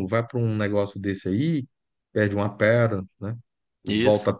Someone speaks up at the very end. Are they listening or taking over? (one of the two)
listening